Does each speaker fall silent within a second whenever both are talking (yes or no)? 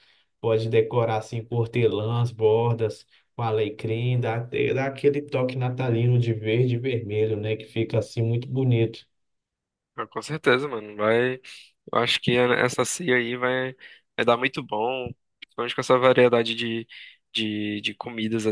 yes